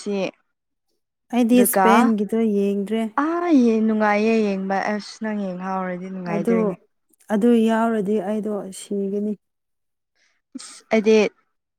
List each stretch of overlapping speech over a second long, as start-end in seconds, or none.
none